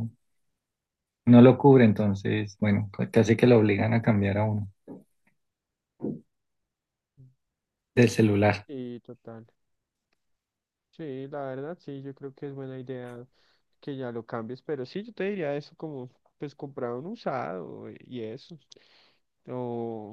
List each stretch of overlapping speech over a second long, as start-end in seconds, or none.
none